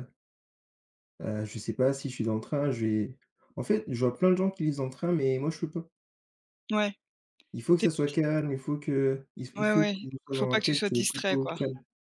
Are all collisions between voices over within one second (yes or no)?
no